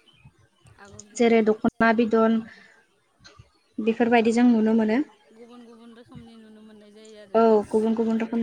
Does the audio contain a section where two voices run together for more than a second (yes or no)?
no